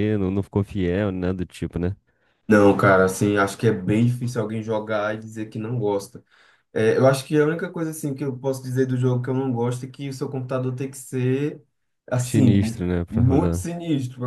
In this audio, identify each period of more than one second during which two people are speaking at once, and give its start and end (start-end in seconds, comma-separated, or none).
12.2-13.7